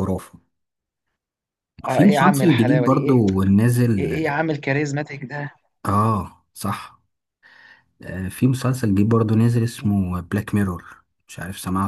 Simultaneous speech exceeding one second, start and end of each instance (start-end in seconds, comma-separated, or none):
1.9-3.2